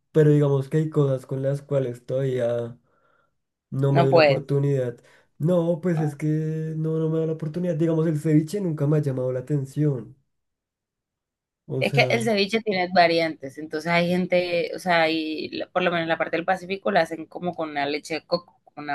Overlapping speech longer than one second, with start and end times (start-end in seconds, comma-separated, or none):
none